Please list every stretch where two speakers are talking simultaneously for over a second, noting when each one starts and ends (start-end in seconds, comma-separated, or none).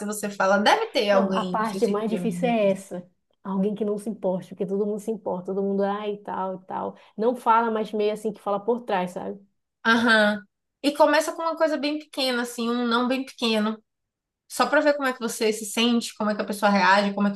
1.1-2.9